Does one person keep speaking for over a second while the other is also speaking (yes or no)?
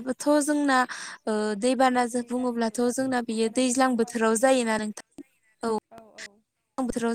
yes